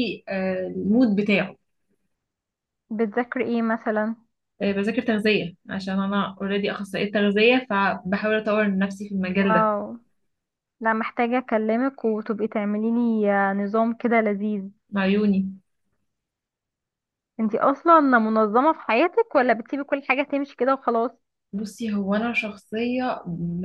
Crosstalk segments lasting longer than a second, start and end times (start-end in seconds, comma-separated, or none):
none